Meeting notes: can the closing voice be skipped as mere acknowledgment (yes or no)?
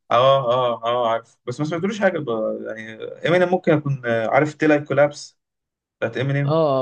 no